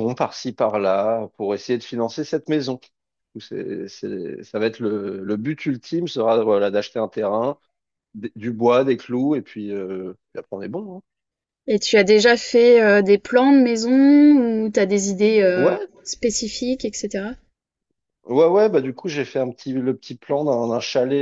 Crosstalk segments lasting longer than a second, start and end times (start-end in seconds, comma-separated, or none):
none